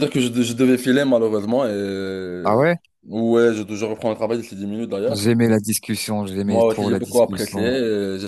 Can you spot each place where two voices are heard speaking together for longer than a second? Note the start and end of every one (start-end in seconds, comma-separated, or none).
6.5-7.7